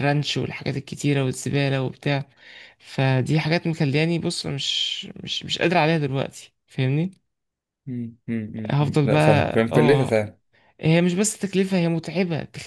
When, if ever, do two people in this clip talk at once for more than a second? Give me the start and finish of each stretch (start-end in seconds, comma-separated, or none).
8.7-10.1